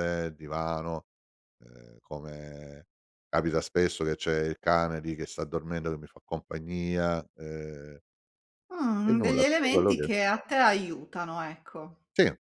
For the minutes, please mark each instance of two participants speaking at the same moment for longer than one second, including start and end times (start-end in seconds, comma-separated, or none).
9.0-10.4